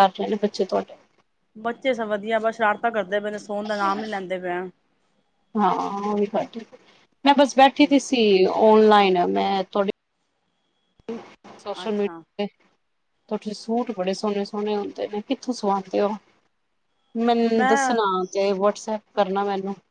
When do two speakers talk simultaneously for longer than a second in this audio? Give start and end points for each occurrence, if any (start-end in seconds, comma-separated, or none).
none